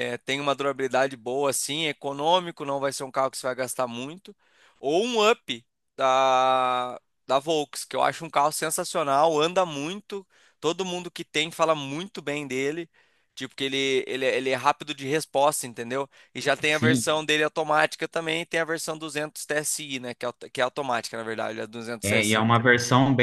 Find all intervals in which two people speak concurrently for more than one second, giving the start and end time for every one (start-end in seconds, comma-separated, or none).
none